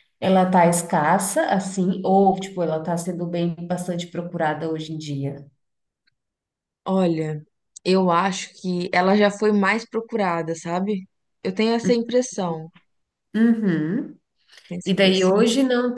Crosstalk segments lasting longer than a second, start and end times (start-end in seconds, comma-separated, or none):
none